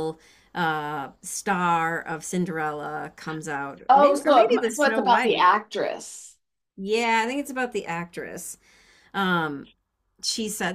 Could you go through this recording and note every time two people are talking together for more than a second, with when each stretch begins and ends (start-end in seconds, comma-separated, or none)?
3.9-5.5